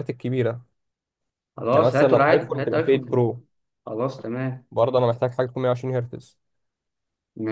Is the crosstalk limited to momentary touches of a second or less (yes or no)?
no